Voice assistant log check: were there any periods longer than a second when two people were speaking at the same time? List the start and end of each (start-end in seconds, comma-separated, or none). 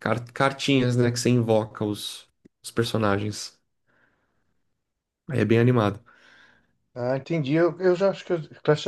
none